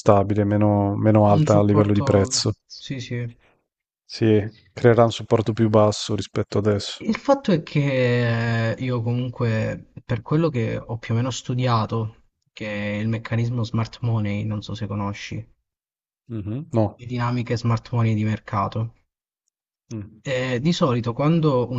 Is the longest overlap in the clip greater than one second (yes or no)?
yes